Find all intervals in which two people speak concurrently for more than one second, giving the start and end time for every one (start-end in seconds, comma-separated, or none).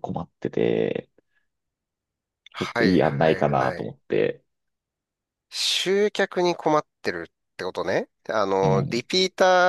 2.6-3.9